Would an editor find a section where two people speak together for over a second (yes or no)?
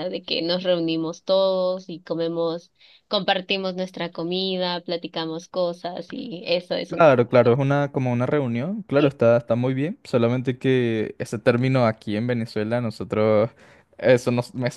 no